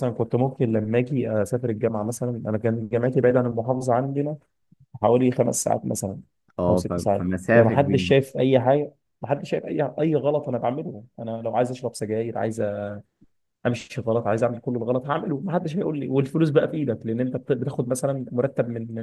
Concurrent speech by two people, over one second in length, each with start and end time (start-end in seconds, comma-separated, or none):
6.7-8.2